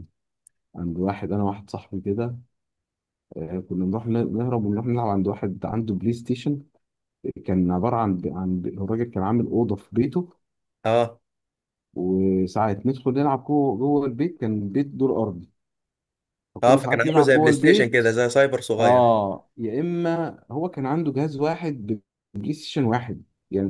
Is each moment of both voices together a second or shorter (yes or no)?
no